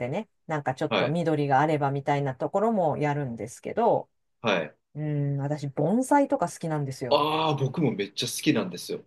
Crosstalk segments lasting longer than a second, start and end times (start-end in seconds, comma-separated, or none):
none